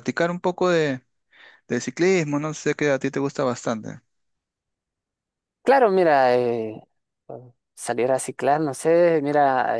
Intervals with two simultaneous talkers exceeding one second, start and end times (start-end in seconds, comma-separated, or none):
none